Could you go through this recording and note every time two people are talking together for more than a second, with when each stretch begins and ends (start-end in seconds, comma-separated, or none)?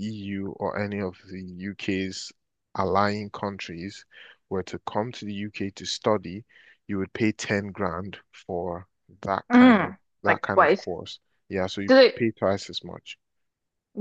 9.5-10.9